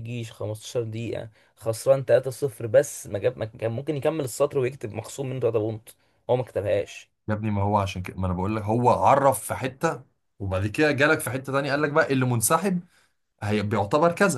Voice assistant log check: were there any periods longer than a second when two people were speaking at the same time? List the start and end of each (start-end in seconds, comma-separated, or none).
none